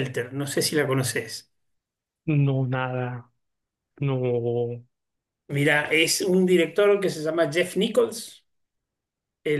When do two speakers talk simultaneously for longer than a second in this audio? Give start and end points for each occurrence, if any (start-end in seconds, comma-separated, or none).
none